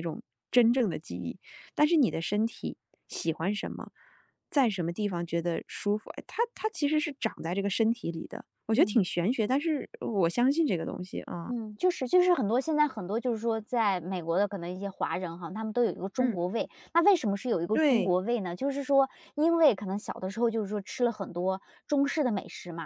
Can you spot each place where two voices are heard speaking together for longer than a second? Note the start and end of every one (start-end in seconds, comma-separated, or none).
none